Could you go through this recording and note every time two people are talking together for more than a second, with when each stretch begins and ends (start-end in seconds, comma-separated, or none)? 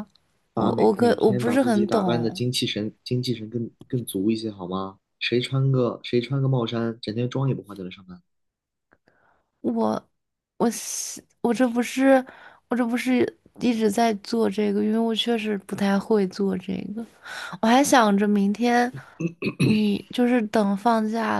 0.5-2.4